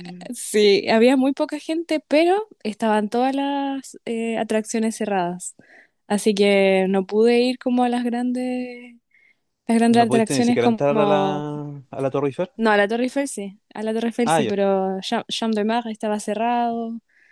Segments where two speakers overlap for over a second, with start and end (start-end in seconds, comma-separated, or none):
9.9-11.5